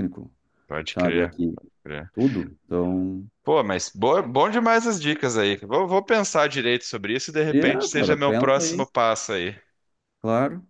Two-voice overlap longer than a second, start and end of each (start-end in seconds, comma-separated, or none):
7.5-8.9